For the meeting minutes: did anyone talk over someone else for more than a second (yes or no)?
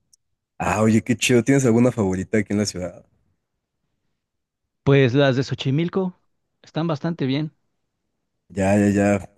no